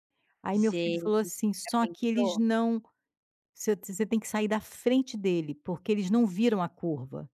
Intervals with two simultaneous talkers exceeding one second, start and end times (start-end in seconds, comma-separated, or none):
0.5-2.4